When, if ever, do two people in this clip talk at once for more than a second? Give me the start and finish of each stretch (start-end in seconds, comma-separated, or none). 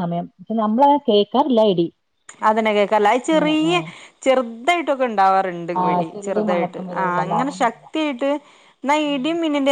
5.8-7.8